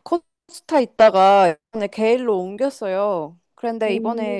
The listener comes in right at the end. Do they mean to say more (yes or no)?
no